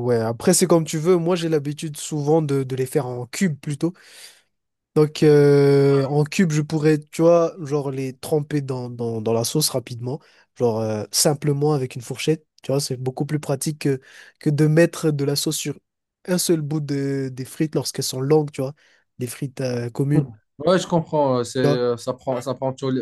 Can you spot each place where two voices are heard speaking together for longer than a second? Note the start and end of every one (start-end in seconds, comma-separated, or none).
none